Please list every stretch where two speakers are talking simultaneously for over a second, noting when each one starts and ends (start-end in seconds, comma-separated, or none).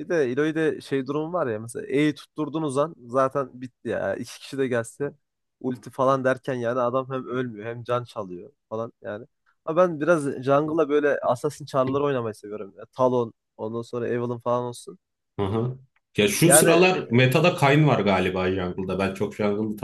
none